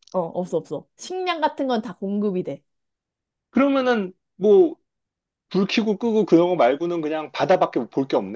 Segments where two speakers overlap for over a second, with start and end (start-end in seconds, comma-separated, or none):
none